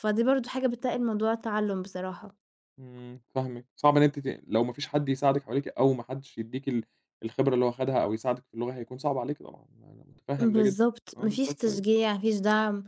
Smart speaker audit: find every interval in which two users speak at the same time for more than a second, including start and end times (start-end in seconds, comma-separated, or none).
10.4-11.8